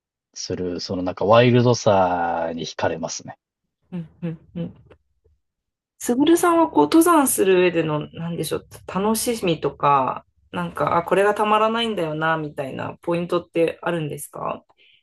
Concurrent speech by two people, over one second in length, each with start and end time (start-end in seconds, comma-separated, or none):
none